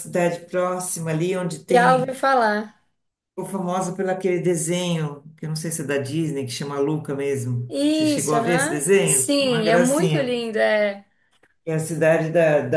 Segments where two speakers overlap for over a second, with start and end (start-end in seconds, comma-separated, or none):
7.7-10.3